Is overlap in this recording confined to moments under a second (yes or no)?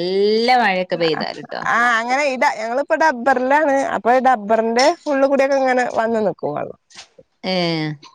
yes